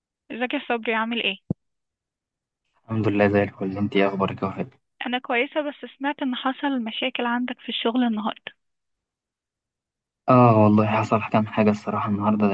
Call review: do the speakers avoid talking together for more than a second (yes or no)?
yes